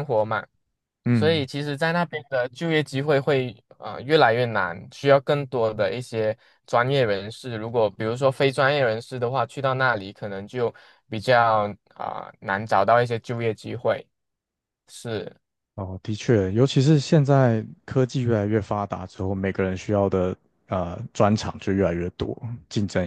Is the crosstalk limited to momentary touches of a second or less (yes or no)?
yes